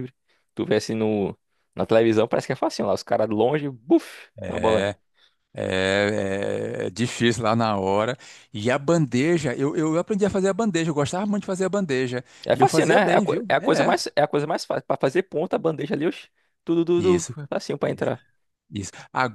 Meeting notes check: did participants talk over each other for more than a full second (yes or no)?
yes